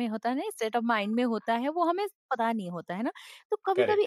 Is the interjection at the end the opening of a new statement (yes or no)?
no